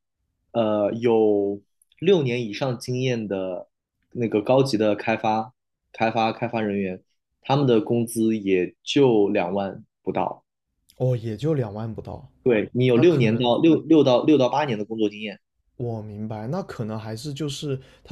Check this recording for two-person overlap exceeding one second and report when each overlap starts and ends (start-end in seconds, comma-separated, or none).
none